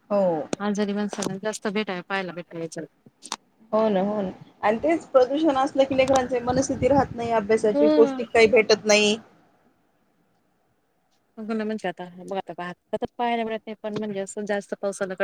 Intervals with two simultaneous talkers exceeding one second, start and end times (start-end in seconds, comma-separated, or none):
none